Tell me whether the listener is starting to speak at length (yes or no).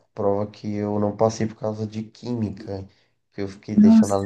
no